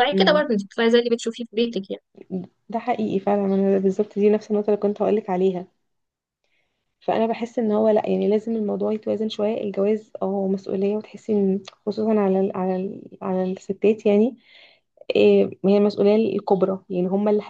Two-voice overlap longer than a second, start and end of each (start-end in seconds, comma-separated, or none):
none